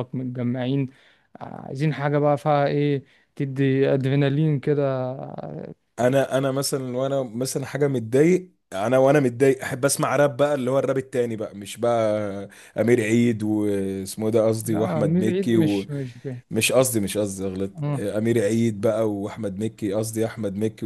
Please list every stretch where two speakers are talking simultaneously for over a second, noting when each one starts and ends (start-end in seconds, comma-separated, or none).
14.6-15.9